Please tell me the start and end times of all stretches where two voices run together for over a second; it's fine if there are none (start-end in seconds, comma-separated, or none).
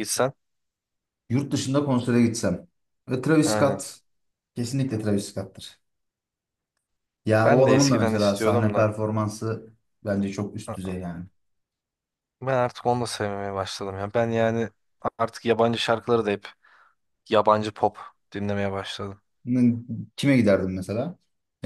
7.5-8.9